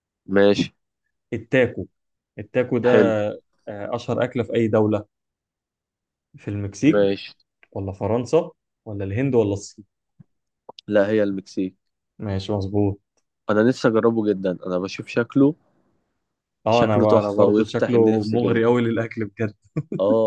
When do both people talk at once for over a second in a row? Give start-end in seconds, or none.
16.7-18.7